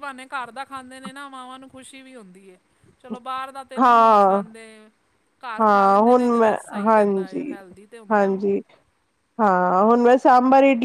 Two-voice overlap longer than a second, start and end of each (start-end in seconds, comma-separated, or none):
5.6-7.7